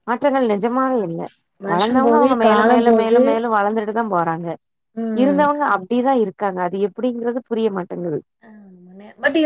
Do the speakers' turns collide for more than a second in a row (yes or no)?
yes